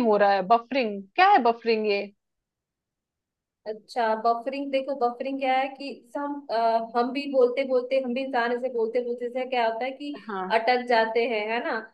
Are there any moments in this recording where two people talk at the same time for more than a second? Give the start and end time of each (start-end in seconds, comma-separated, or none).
none